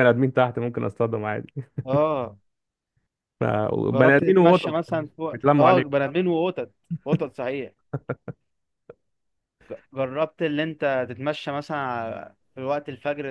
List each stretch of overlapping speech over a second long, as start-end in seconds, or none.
3.9-6.0